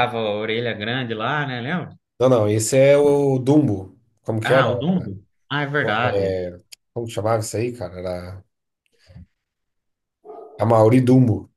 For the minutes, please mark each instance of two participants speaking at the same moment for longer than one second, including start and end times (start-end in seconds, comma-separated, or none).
none